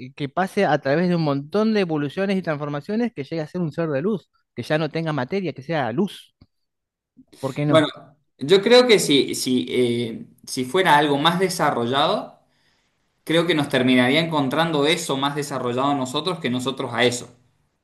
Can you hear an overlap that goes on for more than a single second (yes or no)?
no